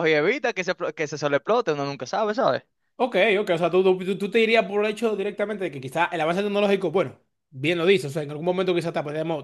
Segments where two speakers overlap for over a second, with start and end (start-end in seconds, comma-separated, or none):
none